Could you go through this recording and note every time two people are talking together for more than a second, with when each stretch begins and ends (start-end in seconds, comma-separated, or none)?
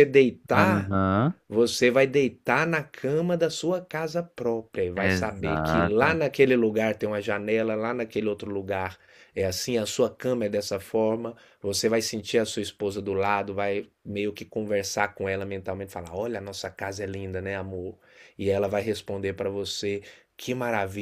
5.0-6.2